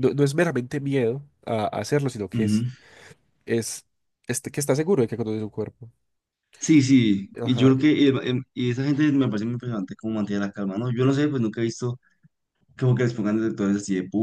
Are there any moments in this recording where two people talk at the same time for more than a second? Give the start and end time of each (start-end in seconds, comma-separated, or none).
none